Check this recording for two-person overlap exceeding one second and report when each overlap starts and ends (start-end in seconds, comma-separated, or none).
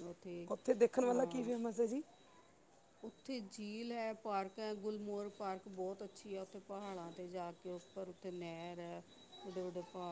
none